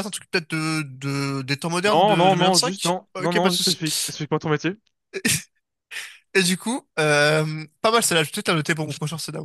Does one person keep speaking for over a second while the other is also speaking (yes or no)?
yes